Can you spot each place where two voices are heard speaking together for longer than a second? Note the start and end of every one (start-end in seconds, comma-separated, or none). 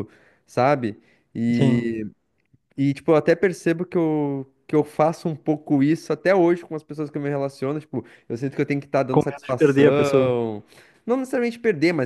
9.1-10.3